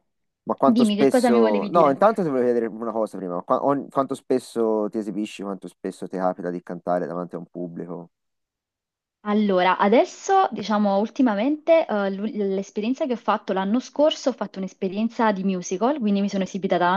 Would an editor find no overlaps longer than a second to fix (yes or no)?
no